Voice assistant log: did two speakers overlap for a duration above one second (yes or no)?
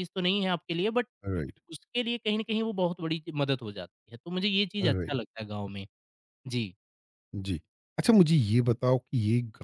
no